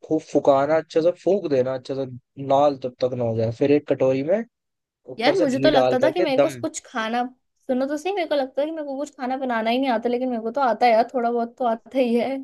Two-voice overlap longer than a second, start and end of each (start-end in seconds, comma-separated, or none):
5.2-6.6